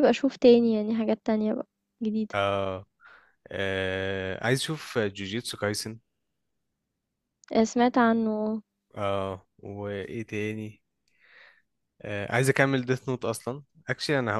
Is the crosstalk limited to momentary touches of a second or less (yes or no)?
yes